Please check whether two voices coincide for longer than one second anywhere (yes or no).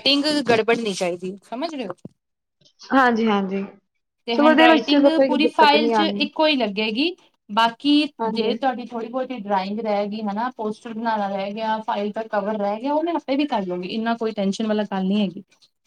yes